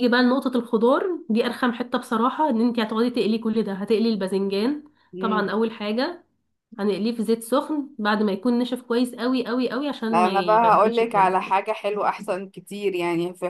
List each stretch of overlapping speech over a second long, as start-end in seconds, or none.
10.1-11.3